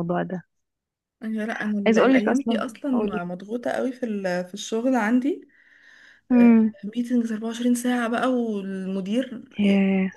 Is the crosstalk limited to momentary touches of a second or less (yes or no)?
no